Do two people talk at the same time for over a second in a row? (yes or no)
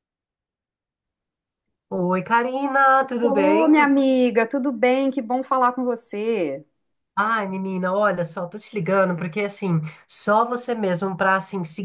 no